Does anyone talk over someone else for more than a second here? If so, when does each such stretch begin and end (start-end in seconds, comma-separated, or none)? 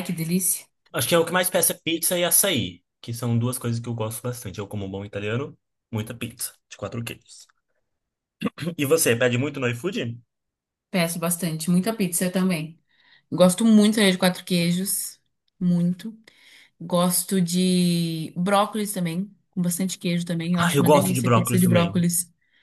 20.6-22.1